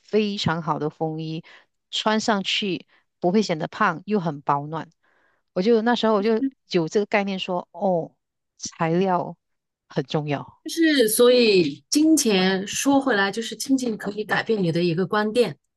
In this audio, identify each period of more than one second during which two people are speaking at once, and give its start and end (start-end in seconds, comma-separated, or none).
none